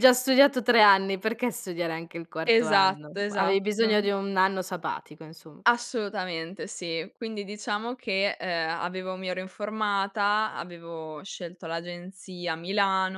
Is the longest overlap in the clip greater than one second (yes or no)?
yes